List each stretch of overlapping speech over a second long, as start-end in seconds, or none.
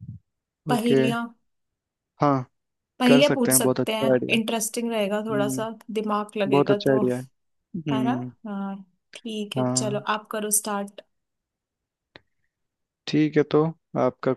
3.0-4.4